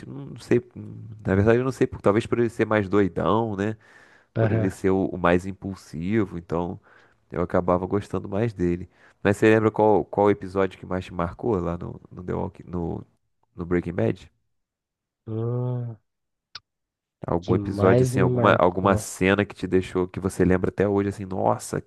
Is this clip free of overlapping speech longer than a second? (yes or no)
no